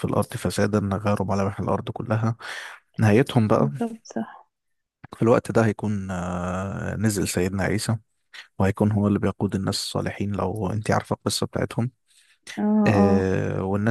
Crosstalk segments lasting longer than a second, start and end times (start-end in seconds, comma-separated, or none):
none